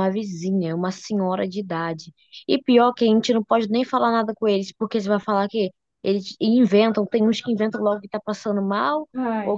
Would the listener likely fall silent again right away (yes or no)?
yes